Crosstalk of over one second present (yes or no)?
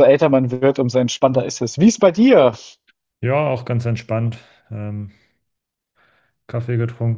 no